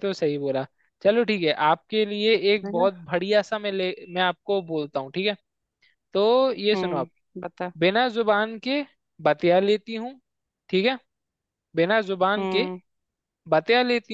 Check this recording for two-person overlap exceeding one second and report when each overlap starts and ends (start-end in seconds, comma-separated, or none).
none